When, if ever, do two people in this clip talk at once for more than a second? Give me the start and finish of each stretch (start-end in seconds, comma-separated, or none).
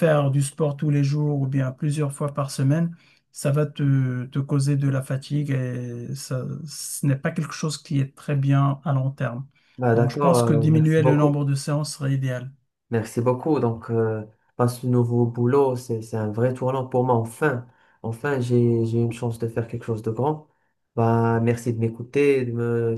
9.9-11.4